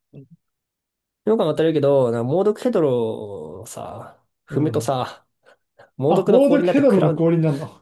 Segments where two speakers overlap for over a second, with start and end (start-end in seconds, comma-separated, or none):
6.1-7.3